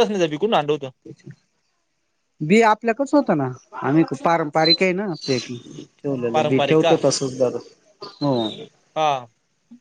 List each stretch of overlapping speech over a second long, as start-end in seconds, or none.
none